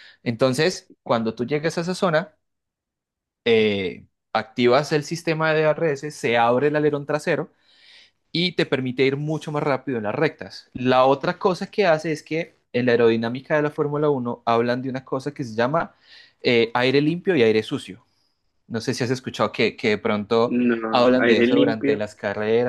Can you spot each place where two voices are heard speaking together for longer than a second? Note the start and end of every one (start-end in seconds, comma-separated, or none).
20.5-22.0